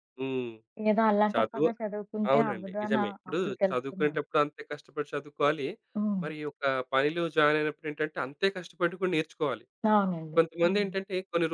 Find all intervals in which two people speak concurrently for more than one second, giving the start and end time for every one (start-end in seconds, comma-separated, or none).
2.3-4.2